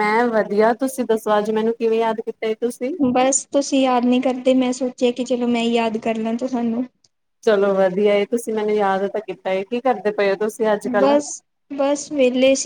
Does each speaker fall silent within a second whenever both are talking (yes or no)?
yes